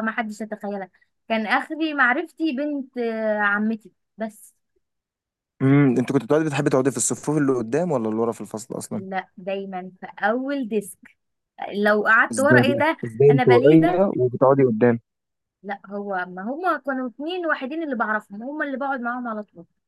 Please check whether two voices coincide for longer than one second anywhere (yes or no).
yes